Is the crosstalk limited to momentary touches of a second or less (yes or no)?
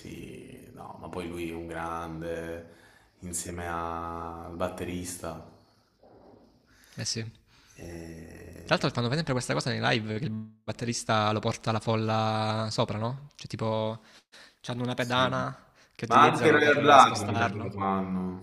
no